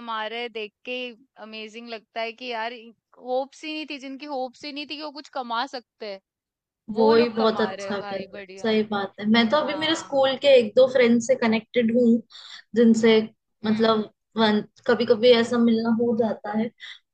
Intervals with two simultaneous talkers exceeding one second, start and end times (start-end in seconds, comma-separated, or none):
7.0-8.7